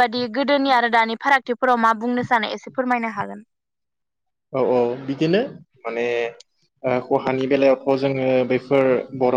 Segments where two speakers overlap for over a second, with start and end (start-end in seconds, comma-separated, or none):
none